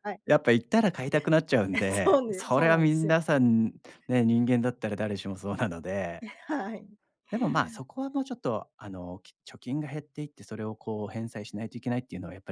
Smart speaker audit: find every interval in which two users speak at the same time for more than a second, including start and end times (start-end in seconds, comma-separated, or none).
1.7-3.2